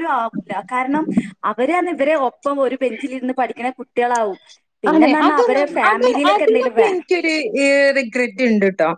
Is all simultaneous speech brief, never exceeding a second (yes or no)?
no